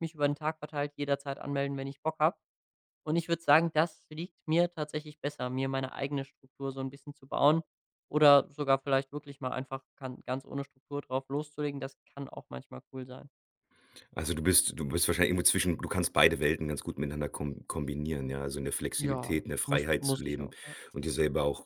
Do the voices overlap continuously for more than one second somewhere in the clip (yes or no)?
yes